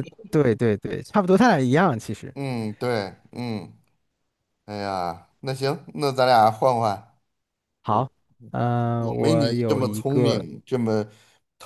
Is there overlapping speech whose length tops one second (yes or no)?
yes